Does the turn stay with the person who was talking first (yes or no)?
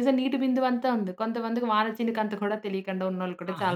no